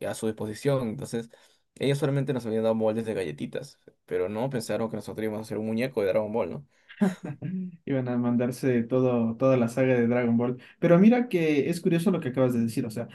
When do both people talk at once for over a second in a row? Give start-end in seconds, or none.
none